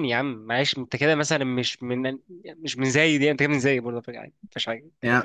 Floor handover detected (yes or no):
yes